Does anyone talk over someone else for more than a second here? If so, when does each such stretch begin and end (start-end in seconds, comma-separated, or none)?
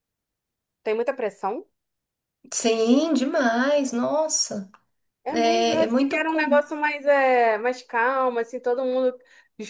5.3-6.6